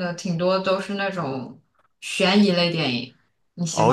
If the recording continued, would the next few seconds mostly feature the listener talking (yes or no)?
yes